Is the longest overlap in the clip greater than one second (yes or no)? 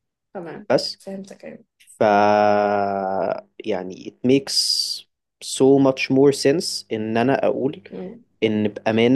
no